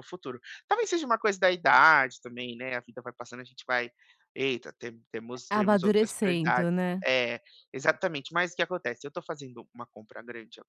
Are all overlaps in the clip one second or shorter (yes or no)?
no